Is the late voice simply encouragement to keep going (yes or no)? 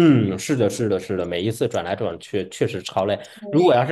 yes